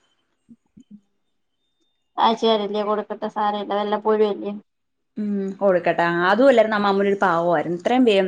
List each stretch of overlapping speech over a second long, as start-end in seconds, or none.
none